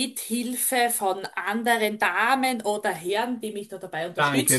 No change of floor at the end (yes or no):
no